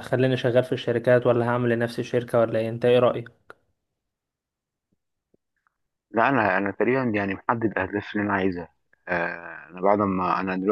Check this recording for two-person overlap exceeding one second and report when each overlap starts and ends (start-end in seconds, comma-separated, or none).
none